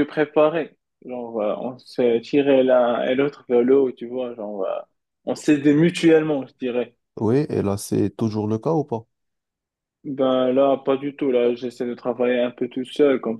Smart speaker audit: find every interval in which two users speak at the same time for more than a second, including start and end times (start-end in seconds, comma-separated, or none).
none